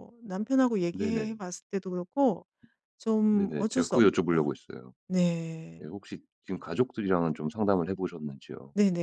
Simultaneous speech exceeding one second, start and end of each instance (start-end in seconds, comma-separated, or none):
3.3-4.5